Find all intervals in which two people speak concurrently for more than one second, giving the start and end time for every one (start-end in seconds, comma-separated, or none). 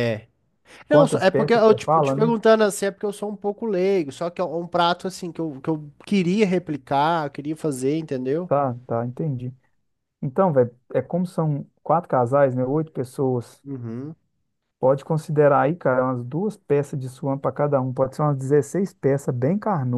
0.9-2.4